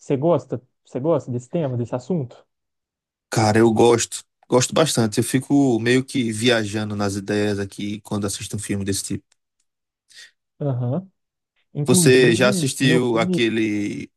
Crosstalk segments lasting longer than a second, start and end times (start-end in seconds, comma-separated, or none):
11.9-13.4